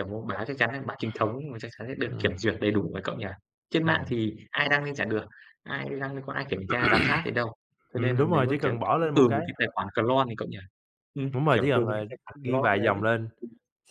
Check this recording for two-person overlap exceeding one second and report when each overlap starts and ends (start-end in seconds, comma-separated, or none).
7.9-9.4, 11.3-13.0